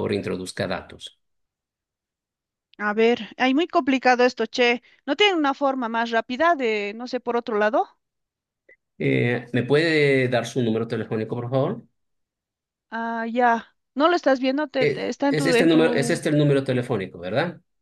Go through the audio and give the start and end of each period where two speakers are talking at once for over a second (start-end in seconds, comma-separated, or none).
14.8-16.2